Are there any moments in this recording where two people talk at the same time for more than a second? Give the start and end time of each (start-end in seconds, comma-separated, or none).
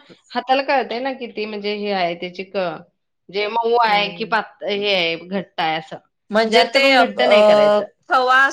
none